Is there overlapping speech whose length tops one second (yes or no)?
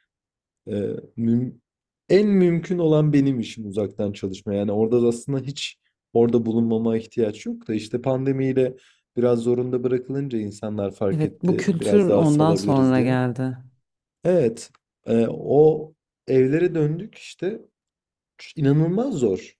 yes